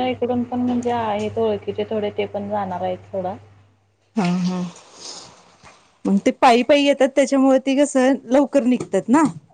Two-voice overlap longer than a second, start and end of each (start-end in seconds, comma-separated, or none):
none